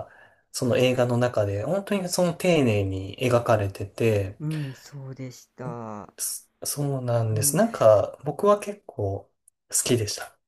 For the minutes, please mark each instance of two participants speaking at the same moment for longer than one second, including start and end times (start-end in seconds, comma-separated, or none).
none